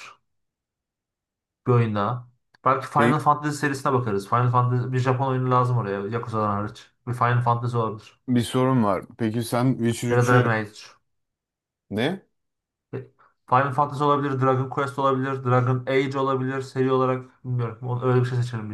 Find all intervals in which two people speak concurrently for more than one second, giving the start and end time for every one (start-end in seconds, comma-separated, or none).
none